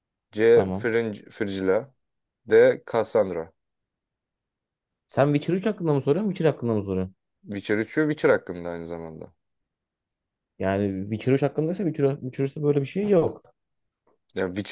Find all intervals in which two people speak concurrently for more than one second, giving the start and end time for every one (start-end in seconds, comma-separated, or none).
none